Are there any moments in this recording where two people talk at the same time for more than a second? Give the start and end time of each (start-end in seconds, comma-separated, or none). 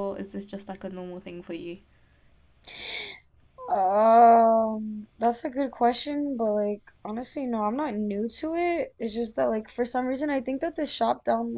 none